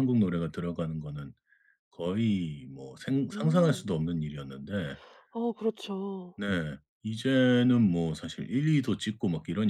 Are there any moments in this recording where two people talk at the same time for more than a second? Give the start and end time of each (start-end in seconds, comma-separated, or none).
none